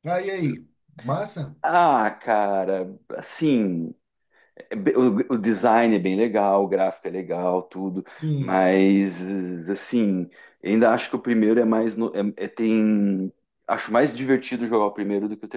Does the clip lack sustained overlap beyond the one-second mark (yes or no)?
yes